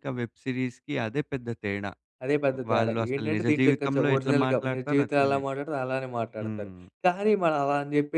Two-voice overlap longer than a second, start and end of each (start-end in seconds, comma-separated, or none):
2.7-5.4